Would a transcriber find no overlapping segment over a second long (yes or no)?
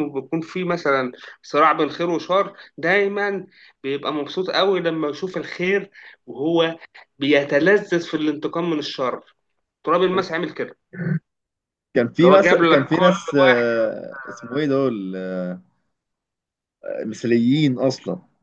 no